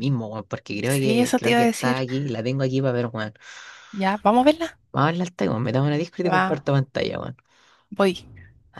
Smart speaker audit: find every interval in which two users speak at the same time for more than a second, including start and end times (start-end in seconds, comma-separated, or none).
0.8-2.0